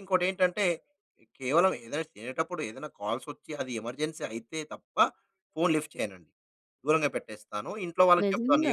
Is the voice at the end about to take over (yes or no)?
no